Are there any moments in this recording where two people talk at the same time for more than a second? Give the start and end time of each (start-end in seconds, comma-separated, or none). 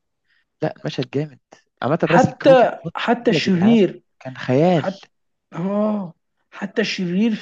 2.0-3.8